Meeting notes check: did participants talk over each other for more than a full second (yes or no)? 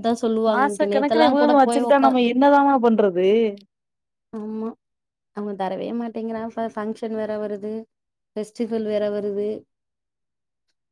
yes